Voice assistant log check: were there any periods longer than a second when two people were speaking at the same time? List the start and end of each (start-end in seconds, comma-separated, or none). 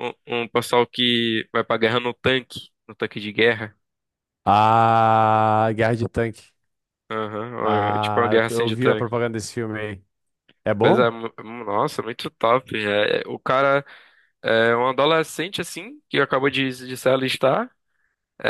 7.6-9.1